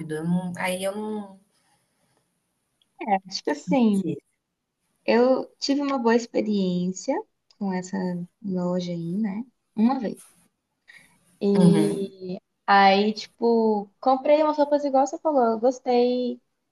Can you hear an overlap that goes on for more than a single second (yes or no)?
no